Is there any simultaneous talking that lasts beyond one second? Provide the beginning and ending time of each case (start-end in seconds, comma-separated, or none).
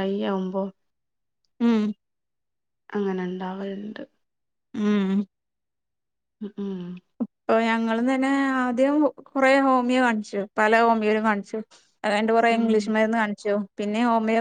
none